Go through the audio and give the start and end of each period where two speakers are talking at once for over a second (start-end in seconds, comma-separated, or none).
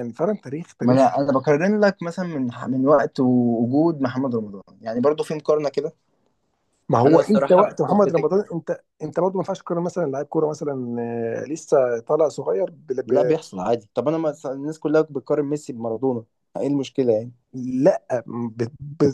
7.0-8.3